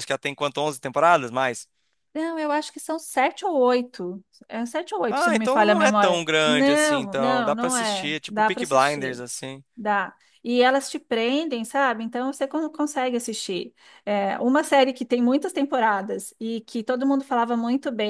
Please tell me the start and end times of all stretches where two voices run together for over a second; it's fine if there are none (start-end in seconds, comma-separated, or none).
5.1-9.2